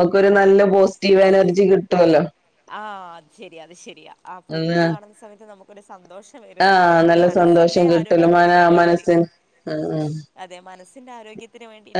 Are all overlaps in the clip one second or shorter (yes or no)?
no